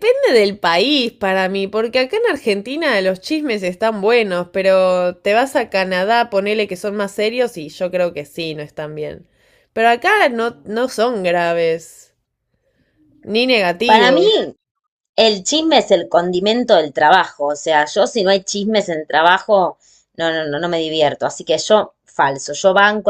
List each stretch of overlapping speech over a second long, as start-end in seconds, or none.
none